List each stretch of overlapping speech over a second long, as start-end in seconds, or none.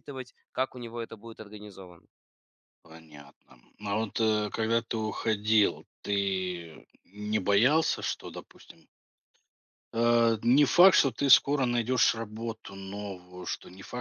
none